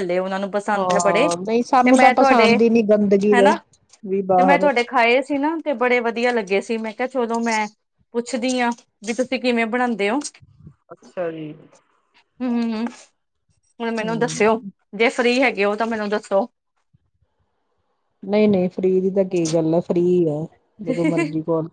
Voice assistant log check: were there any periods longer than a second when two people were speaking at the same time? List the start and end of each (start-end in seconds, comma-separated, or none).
none